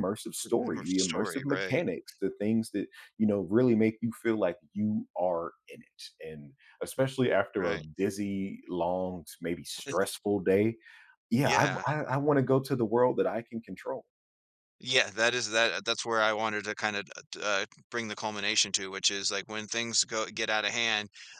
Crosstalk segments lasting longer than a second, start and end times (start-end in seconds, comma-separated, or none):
0.6-1.8